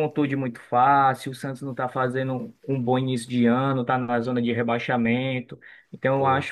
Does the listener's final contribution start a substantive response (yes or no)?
no